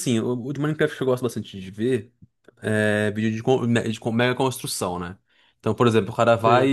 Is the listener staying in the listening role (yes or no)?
yes